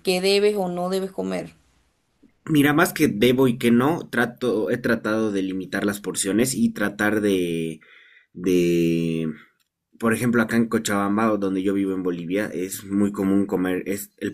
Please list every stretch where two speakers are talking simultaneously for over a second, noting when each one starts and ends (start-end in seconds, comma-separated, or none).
none